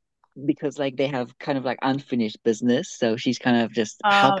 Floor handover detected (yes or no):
yes